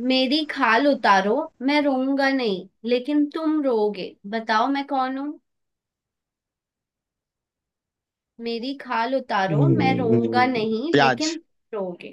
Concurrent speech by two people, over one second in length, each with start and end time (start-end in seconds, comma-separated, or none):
9.5-11.4